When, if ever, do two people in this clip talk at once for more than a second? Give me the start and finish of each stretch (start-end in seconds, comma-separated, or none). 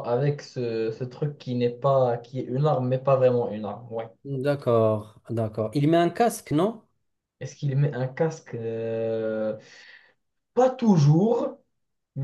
none